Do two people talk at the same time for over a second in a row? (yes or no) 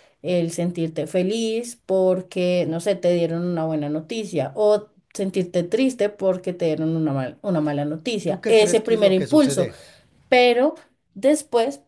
yes